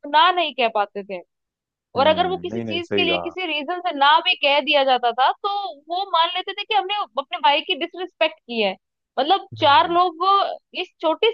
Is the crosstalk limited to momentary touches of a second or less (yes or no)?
no